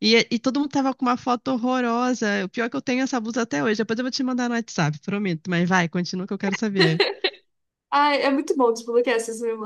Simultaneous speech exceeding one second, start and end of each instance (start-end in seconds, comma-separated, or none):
none